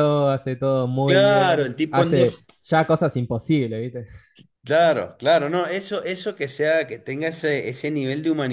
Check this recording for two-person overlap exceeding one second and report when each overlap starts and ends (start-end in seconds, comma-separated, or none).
1.0-2.5